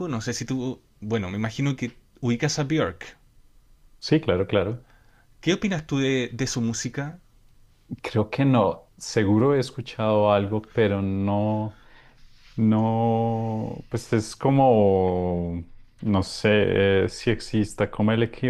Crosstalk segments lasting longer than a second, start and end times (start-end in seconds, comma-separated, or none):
none